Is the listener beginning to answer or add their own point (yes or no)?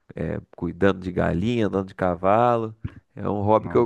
no